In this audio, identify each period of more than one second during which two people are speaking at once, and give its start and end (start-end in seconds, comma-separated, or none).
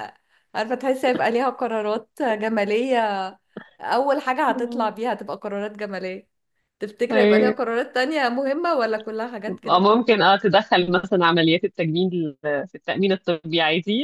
none